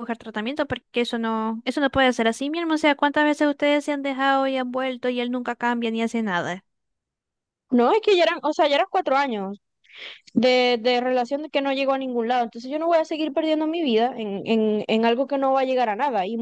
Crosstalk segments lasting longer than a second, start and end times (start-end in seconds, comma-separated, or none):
none